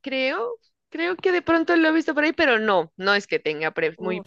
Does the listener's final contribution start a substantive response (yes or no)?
yes